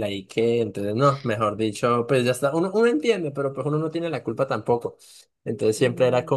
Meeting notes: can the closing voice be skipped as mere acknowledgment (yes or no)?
yes